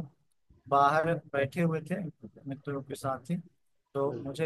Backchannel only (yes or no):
yes